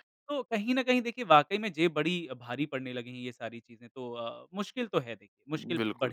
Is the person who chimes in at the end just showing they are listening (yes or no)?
no